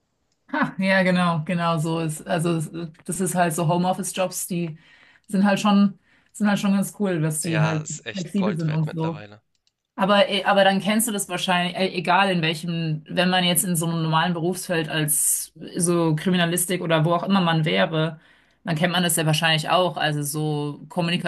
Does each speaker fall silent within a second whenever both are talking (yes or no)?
no